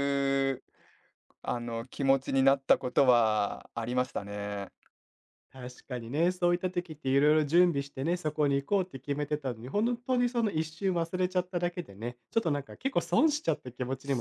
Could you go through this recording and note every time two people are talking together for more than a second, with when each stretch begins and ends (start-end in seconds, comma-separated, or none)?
none